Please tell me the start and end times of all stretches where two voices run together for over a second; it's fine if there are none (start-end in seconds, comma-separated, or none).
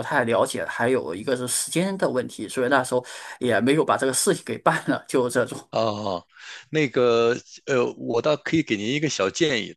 none